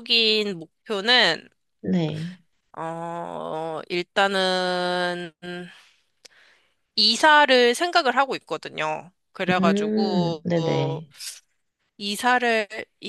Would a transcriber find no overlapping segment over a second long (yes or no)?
no